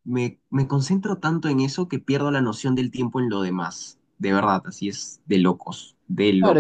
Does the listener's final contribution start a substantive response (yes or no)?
yes